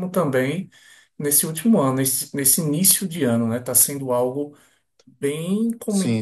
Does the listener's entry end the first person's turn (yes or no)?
no